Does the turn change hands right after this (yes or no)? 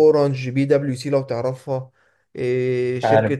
no